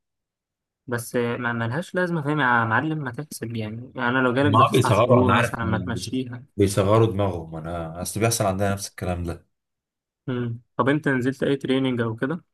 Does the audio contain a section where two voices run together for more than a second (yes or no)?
yes